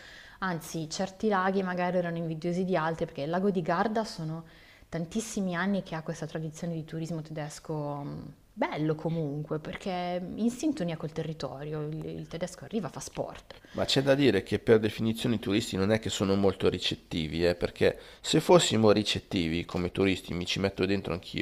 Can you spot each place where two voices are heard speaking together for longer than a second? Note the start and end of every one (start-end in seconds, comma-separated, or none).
none